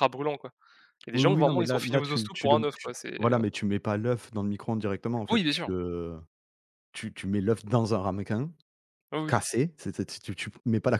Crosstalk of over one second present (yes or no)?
yes